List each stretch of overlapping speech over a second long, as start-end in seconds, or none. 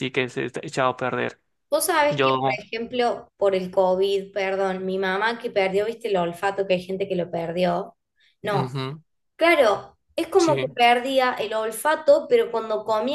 none